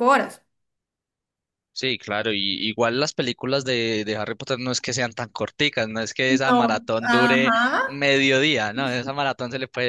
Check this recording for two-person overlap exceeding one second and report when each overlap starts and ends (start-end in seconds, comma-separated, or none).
6.3-8.1